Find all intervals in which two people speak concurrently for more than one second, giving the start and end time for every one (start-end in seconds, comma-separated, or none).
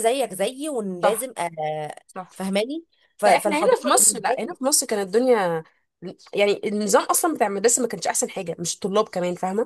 3.2-4.6